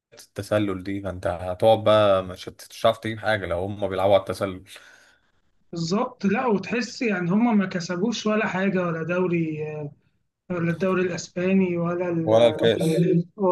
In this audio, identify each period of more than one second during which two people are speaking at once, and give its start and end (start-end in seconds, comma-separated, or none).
none